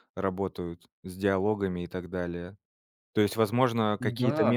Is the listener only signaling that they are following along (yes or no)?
yes